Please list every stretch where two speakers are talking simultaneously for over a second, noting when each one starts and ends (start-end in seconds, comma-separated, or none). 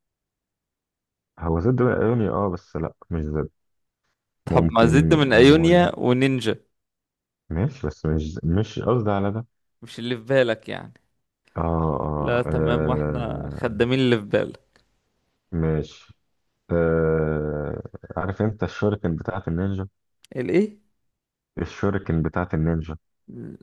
4.5-5.9, 12.2-13.9